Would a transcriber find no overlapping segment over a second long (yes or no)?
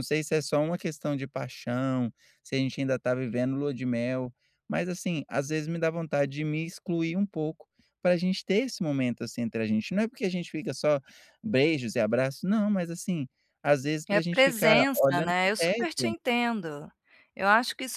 no